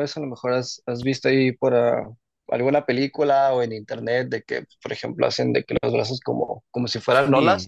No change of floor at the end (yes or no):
no